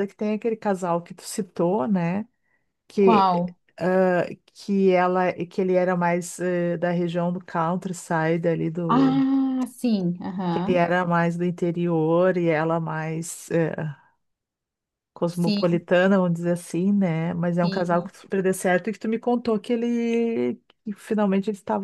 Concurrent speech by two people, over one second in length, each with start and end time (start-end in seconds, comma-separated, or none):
none